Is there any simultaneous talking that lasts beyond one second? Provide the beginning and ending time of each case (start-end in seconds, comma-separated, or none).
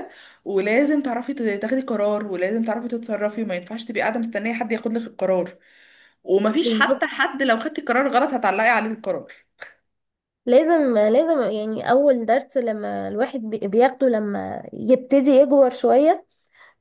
none